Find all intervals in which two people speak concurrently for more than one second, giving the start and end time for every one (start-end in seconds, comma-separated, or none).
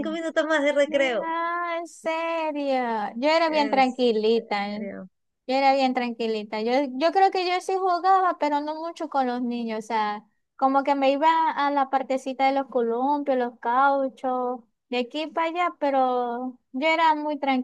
3.5-4.8